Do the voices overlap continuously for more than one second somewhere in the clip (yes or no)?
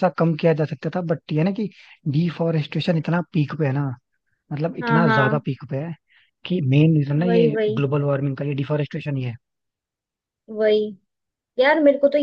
no